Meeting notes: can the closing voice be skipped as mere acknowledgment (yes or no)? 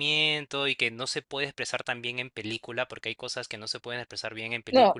yes